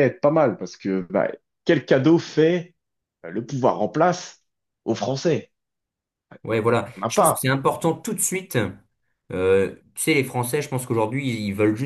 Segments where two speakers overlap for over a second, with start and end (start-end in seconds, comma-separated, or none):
none